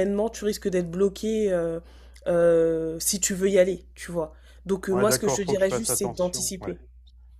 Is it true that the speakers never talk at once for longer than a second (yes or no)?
no